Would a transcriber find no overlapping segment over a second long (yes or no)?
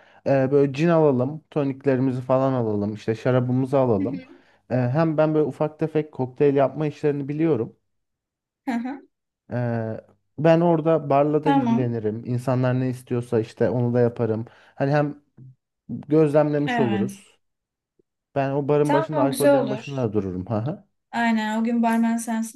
no